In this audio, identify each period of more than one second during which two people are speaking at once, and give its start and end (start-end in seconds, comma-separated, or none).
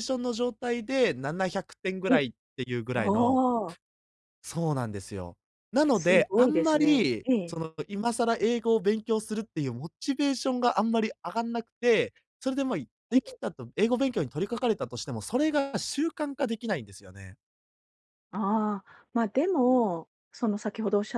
5.9-7.6